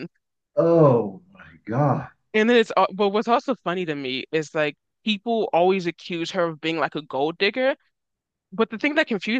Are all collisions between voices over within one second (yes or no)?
yes